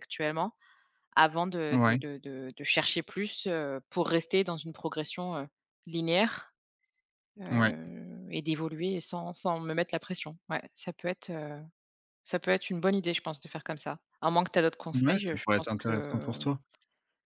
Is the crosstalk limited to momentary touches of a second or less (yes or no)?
no